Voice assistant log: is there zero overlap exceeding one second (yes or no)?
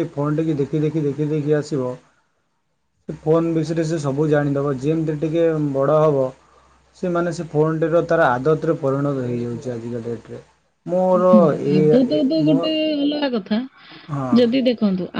yes